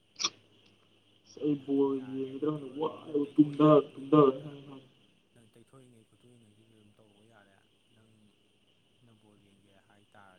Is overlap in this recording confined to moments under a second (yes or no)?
no